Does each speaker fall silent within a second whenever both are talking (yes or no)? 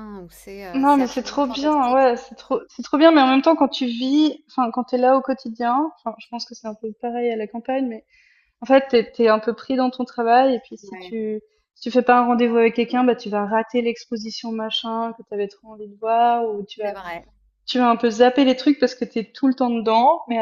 no